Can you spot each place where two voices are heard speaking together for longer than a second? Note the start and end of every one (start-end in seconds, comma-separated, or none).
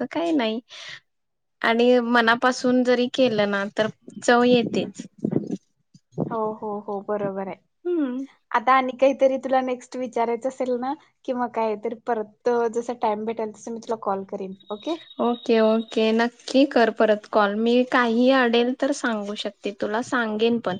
none